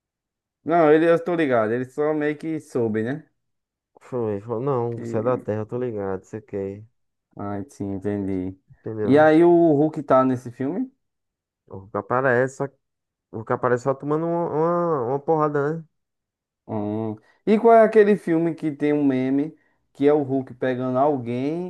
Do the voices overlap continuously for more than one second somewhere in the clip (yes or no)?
no